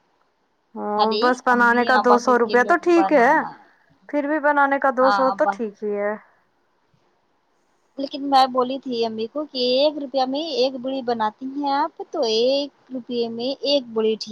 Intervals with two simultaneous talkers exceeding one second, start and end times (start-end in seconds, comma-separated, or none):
0.9-3.3